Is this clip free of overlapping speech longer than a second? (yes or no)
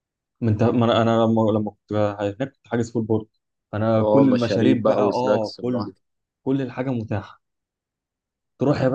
no